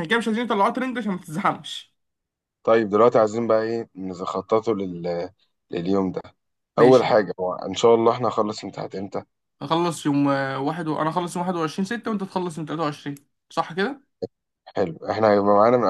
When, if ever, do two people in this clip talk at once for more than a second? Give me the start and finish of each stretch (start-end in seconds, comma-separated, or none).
none